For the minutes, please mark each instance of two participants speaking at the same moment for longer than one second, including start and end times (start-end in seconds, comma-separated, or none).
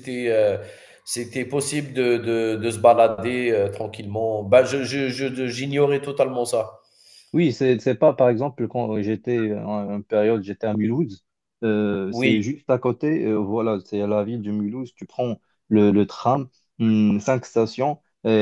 none